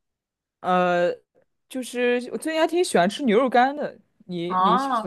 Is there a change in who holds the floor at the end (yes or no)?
yes